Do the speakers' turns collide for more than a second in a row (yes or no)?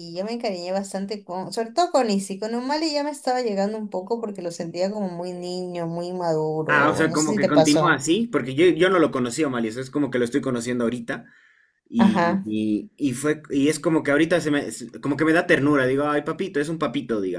yes